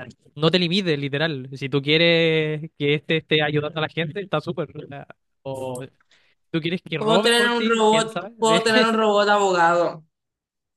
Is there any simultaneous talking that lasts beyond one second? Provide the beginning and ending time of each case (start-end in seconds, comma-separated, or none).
7.0-8.6